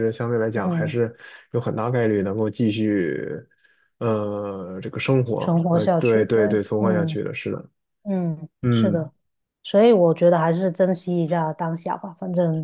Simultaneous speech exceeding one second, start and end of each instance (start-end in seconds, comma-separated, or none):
5.4-7.2